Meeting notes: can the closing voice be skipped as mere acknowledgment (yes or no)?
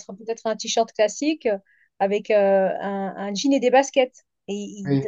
yes